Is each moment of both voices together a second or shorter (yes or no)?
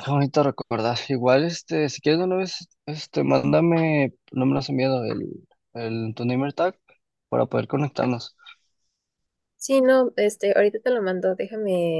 yes